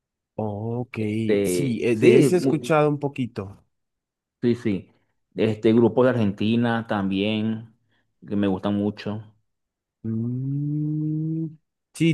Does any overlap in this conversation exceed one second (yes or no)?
yes